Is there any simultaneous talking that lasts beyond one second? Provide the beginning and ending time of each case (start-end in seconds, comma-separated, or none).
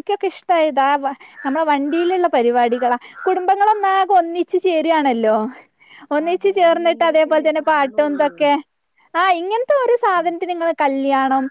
6.3-8.3